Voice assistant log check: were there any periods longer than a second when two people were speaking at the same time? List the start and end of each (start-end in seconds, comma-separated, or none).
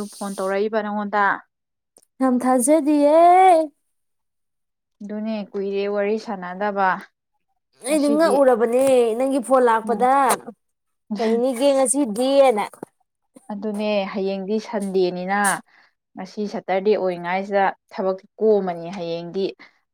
none